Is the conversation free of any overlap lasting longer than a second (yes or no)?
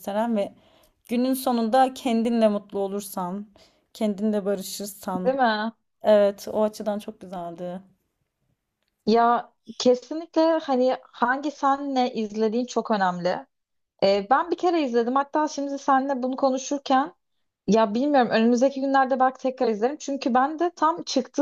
yes